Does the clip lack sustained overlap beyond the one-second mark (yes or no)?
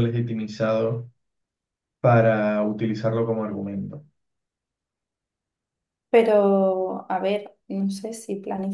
yes